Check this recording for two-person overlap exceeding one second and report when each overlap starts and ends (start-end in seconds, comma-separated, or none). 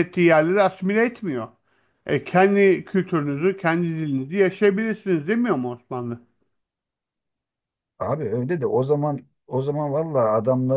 none